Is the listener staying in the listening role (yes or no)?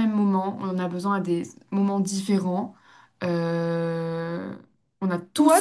no